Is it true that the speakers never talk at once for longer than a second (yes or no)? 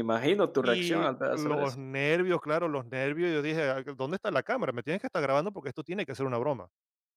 no